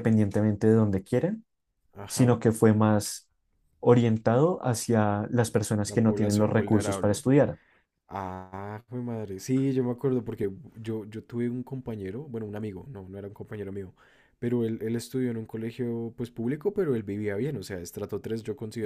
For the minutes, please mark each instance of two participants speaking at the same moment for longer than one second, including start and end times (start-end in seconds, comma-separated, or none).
5.8-7.2